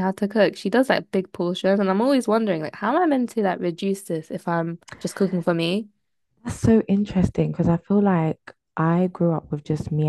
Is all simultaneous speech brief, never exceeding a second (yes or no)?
yes